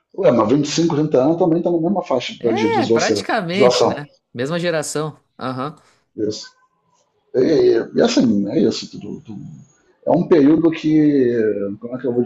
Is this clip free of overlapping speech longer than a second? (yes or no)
no